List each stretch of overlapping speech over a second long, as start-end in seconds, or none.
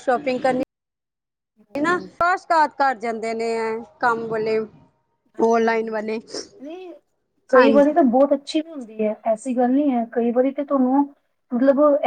none